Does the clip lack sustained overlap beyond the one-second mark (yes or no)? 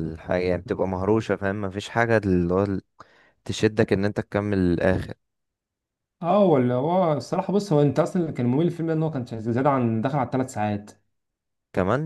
yes